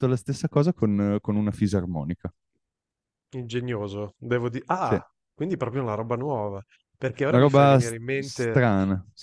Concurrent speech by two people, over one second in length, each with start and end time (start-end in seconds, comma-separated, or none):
7.3-8.6